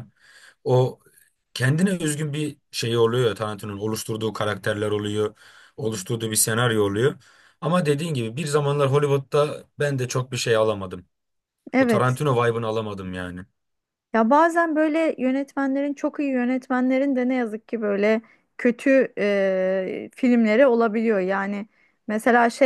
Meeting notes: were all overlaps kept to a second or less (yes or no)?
yes